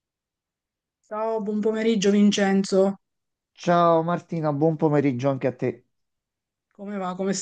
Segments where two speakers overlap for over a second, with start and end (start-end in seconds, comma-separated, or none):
none